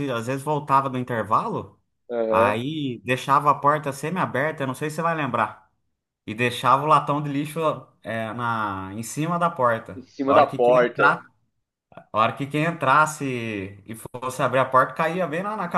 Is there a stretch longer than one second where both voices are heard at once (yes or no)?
yes